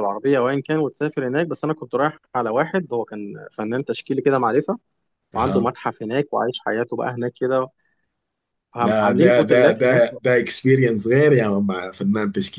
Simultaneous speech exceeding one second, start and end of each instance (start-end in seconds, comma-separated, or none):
8.8-10.0